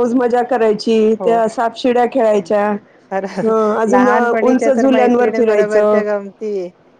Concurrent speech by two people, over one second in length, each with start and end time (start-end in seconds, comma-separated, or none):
4.5-6.0